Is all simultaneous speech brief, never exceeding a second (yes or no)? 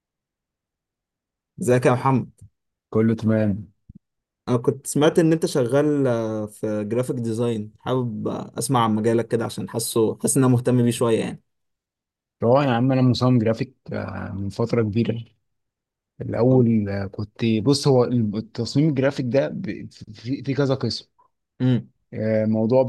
yes